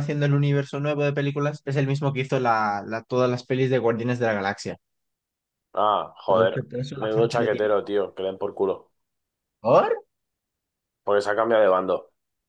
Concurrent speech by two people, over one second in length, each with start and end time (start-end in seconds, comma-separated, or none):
6.3-7.7